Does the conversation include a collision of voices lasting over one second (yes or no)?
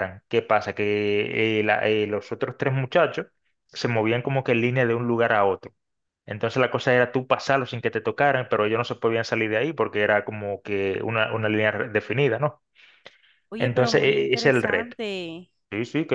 yes